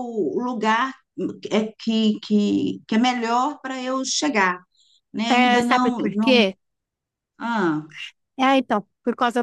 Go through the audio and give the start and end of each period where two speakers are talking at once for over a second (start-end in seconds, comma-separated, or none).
5.3-6.5